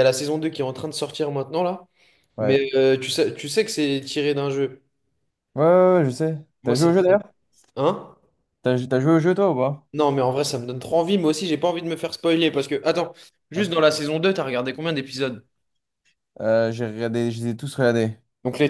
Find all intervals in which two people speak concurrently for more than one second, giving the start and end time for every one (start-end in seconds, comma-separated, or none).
none